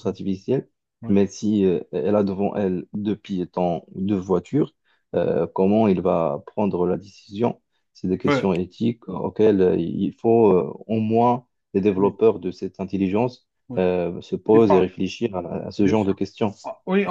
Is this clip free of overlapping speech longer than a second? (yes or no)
yes